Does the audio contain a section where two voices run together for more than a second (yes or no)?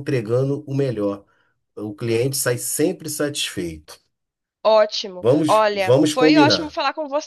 yes